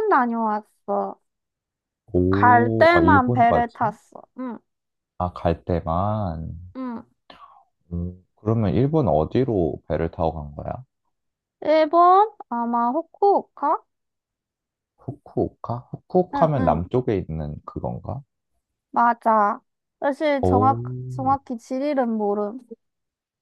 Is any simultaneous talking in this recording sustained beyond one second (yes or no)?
yes